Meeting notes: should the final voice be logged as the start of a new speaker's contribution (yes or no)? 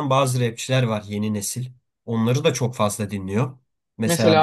no